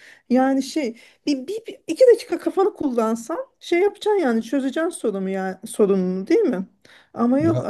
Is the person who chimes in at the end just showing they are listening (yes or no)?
yes